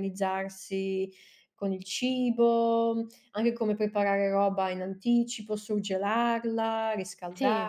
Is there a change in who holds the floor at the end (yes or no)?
no